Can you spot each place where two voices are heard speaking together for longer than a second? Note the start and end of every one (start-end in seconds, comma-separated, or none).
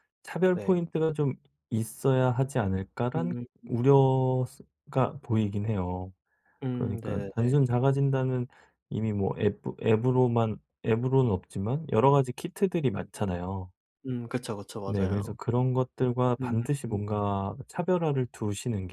none